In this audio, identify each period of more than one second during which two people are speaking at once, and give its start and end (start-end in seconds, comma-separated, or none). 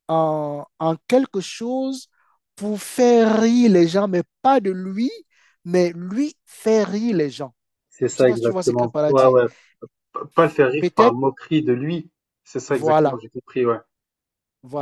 8.1-9.4